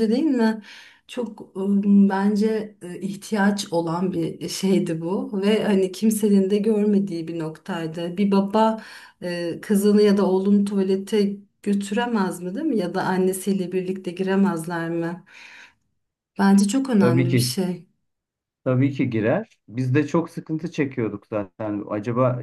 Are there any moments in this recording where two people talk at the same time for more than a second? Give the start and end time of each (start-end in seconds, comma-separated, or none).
none